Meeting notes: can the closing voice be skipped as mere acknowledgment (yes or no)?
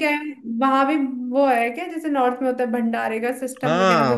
no